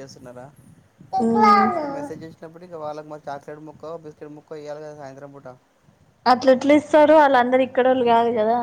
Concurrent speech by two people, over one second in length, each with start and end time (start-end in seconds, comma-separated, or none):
none